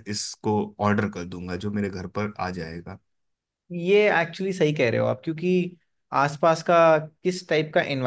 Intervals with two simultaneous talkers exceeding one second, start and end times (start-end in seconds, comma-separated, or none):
none